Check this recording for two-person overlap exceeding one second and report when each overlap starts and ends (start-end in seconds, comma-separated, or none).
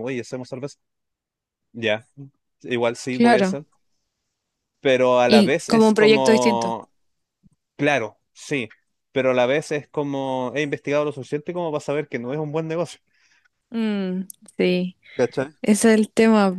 5.3-6.8